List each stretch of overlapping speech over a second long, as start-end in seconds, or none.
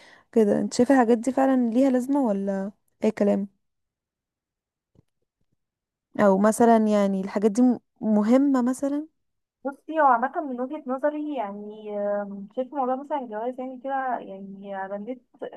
none